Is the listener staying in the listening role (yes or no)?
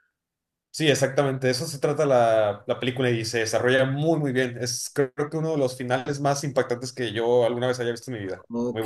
no